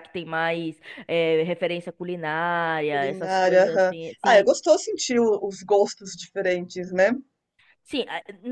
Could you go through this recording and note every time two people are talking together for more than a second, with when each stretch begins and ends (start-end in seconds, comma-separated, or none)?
2.9-4.5